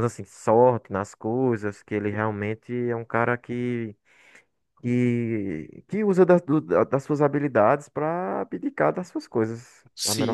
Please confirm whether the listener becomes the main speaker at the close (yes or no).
yes